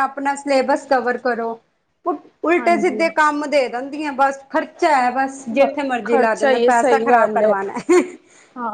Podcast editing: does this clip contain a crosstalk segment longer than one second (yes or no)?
yes